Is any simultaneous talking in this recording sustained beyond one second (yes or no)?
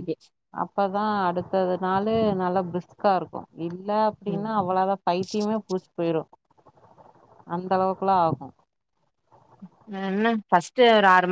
no